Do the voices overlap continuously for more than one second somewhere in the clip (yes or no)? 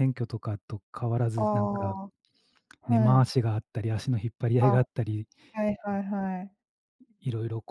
no